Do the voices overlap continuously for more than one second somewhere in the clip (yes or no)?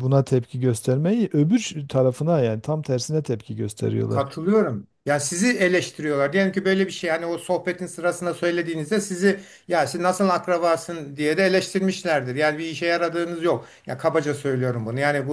no